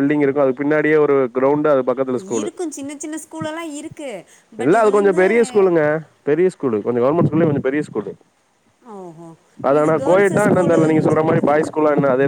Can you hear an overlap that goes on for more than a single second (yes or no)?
yes